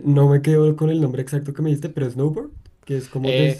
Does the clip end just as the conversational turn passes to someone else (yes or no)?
yes